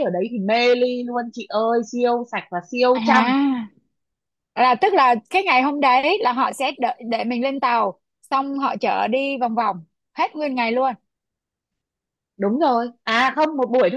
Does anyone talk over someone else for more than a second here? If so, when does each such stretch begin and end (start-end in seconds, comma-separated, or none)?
none